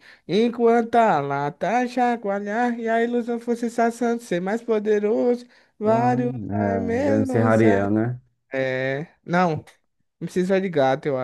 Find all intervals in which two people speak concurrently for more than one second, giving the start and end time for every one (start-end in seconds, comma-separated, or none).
5.9-7.8